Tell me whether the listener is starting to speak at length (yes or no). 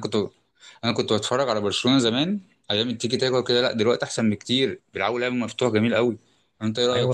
yes